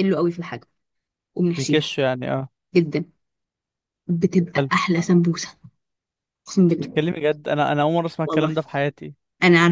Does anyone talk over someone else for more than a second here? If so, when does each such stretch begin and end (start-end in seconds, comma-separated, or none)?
none